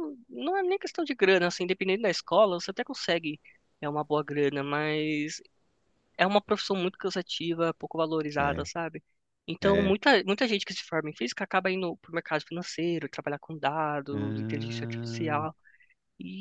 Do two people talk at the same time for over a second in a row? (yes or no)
yes